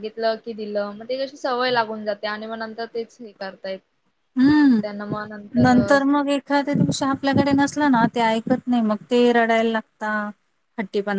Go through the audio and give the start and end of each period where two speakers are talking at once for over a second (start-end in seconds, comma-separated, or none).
none